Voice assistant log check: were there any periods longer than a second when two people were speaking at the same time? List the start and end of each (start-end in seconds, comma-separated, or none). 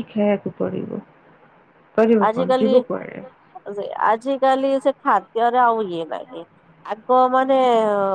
none